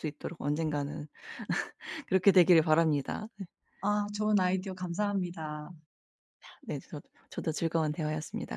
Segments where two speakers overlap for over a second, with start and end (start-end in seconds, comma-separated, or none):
none